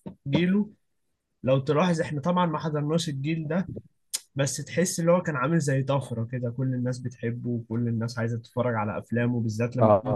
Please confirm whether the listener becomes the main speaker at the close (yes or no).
yes